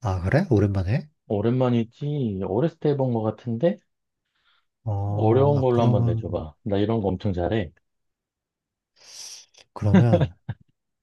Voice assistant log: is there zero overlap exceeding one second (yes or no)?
no